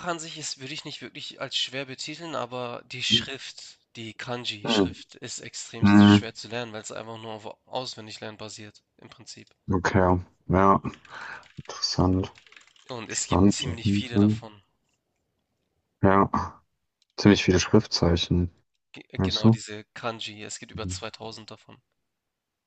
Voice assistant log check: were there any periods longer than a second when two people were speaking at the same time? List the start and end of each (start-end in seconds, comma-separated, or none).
13.1-14.4